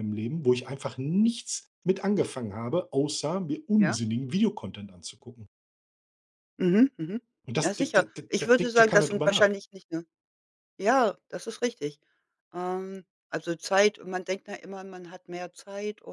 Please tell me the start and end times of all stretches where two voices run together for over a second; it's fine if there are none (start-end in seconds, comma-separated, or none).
7.6-9.5